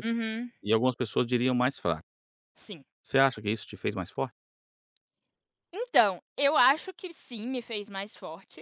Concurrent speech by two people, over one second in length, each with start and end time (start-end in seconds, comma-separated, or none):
none